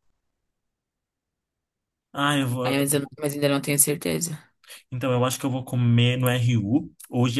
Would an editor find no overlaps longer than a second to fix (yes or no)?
yes